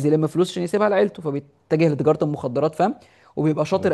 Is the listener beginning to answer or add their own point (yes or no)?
no